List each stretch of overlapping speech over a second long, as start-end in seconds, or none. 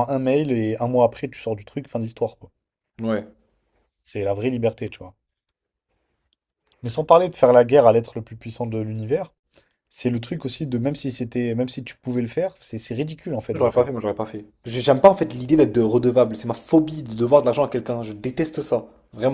none